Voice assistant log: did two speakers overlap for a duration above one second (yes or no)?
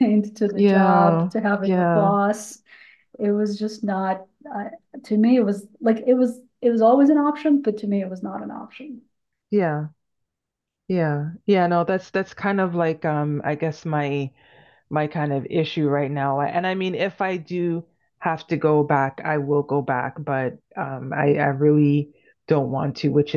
yes